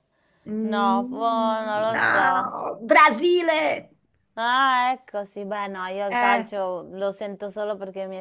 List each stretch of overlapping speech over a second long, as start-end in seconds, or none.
0.6-2.6